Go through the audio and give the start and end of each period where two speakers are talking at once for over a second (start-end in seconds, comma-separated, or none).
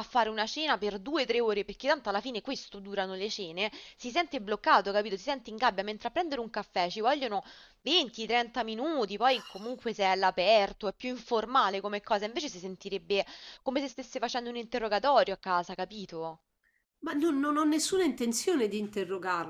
none